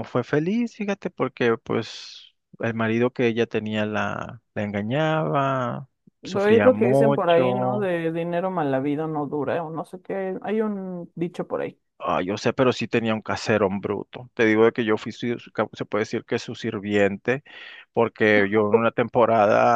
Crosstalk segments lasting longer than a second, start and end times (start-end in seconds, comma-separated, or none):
6.2-7.9